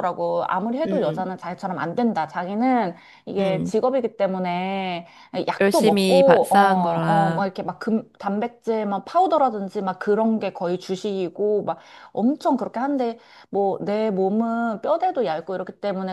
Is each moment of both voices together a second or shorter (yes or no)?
no